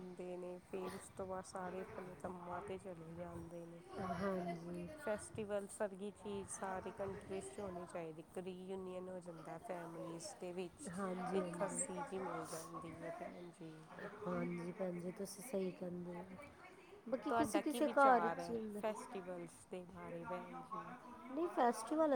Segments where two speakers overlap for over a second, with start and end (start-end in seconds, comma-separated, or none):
17.3-18.8